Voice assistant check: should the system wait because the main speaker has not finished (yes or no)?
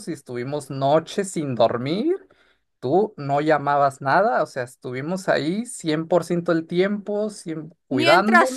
no